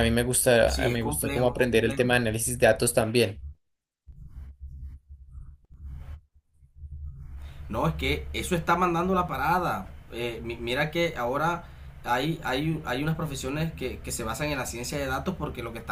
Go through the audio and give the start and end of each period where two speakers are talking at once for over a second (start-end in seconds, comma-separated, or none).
0.7-2.0